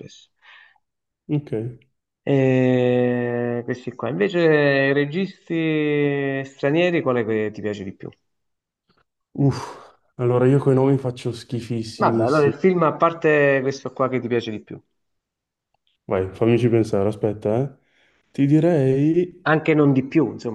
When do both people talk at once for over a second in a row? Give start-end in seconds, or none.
none